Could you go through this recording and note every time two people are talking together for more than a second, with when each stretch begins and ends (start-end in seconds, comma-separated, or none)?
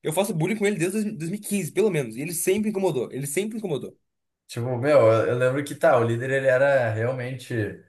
none